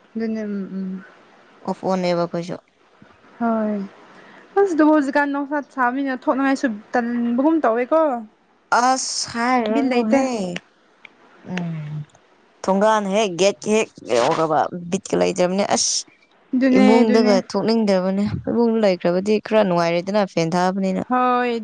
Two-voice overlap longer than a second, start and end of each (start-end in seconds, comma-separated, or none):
none